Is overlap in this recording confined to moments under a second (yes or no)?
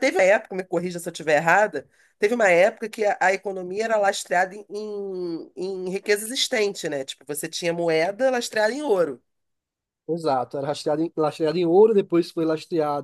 yes